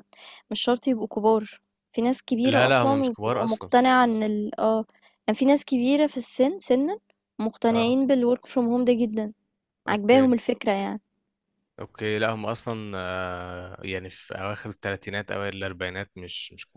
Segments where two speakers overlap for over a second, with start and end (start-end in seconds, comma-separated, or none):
2.4-3.7